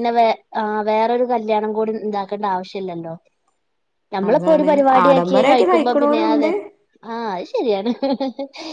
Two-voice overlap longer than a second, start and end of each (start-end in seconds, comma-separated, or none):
4.3-6.5